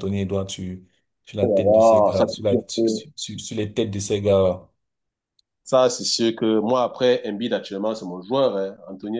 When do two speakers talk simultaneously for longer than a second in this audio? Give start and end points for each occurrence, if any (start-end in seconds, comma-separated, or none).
1.4-2.8